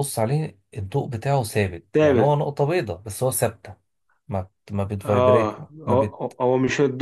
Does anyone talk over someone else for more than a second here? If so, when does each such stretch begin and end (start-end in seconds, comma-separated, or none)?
5.0-6.4